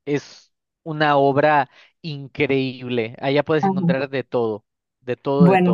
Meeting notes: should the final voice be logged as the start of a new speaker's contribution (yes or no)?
yes